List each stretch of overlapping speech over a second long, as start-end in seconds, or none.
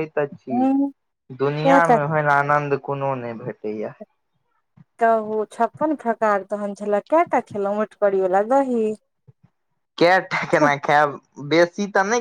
none